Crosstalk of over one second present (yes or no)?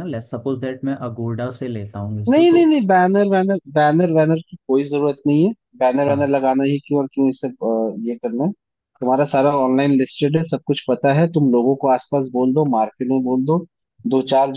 no